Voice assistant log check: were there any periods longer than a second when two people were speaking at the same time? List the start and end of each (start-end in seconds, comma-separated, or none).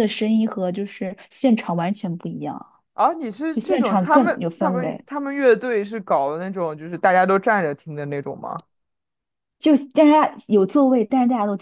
3.5-5.0